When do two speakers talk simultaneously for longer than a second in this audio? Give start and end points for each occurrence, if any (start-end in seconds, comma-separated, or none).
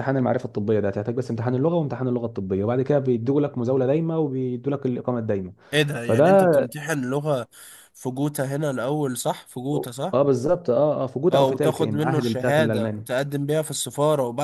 11.3-13.1